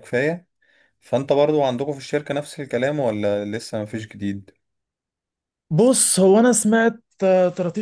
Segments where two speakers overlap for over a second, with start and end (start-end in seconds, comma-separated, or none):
none